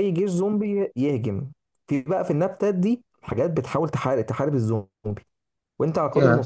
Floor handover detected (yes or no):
no